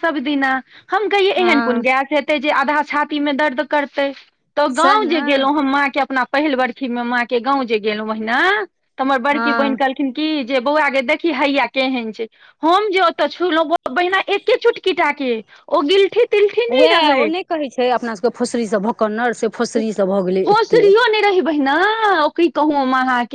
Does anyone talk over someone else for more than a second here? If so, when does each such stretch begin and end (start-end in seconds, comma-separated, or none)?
none